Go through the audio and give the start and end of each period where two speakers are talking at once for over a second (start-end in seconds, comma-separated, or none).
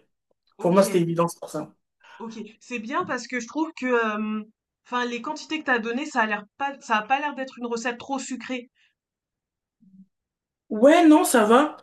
none